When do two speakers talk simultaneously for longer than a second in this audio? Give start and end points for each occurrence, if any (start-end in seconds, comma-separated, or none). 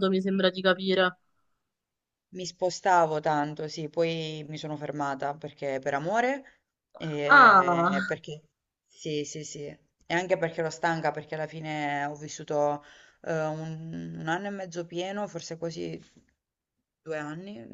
none